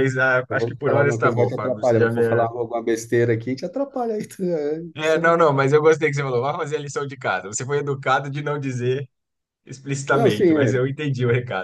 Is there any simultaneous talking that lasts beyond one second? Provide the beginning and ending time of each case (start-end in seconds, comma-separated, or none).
0.5-2.2